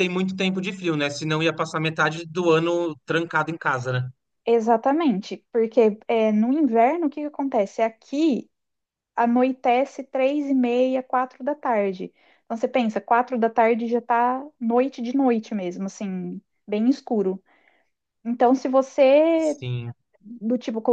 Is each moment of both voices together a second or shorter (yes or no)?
yes